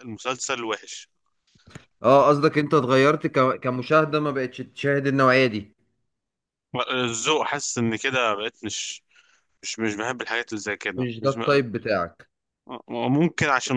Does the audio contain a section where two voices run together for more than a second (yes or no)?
no